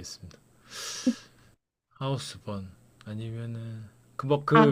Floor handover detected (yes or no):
yes